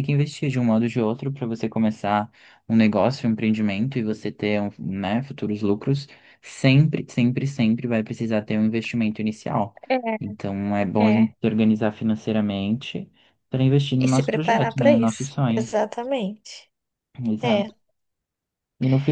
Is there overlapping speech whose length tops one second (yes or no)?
yes